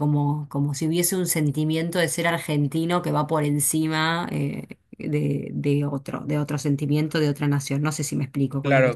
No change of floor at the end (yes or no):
no